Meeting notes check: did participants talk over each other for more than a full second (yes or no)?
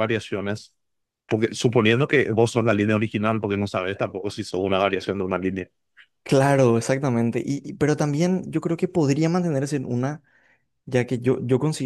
no